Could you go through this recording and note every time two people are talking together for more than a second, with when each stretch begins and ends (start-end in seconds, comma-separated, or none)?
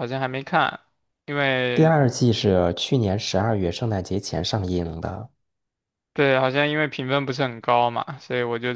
none